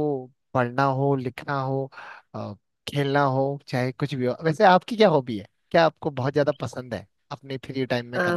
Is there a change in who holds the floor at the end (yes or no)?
yes